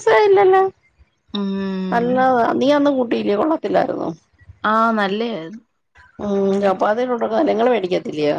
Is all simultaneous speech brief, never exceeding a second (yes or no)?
yes